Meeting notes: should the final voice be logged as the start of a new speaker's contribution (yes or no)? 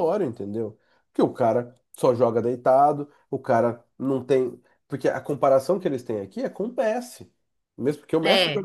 no